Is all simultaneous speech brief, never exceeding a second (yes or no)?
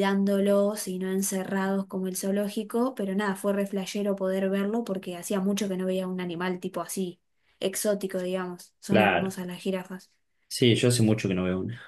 yes